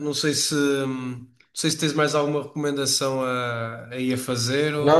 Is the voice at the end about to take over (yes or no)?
yes